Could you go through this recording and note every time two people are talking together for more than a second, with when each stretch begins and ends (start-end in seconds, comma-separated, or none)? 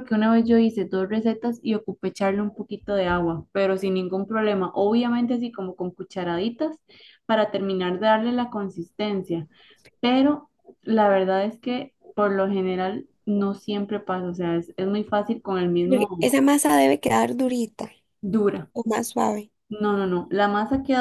none